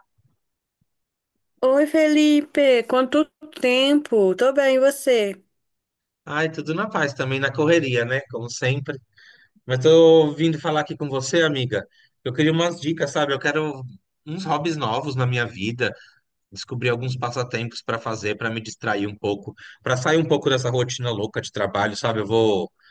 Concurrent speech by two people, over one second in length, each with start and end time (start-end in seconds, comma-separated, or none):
none